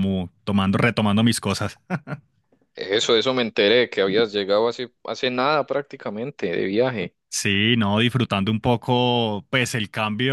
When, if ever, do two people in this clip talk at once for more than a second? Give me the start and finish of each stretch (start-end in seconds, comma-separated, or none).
none